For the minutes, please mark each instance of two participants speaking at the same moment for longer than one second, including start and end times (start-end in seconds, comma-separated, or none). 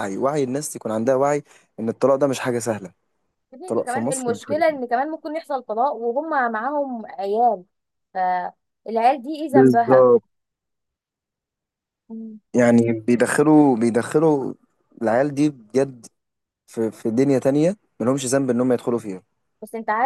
3.6-4.9